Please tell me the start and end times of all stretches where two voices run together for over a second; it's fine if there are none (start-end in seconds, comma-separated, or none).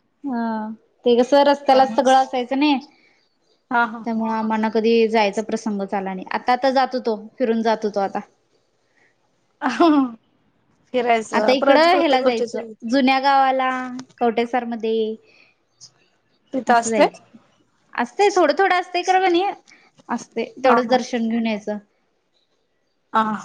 11.4-12.6